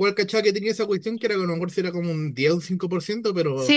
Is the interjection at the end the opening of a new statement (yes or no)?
yes